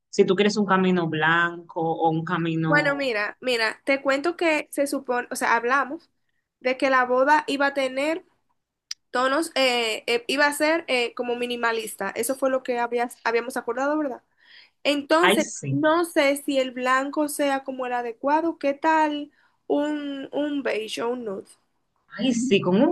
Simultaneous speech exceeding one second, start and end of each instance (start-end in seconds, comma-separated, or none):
none